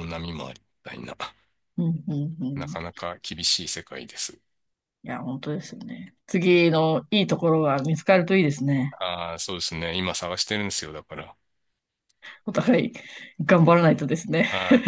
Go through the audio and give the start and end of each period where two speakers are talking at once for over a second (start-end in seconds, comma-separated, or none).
none